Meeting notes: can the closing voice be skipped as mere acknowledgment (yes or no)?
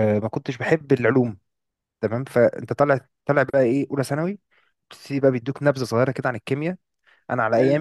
yes